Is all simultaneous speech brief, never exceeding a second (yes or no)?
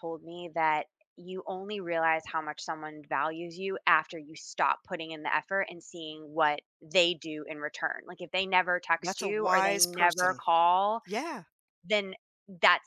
no